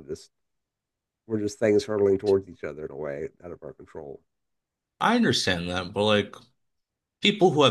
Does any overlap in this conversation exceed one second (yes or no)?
no